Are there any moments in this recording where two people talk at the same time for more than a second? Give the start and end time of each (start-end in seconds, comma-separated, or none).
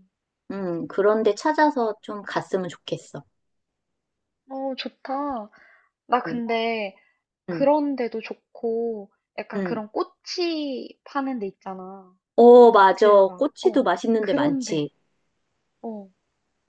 12.9-14.9